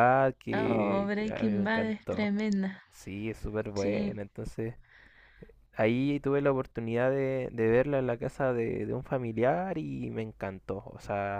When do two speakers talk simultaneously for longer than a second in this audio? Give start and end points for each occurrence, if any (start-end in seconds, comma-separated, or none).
0.5-2.3